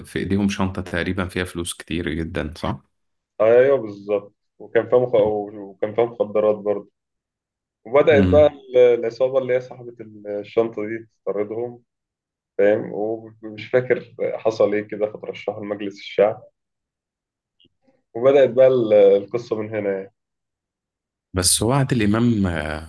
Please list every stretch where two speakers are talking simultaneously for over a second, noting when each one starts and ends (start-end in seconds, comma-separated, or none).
none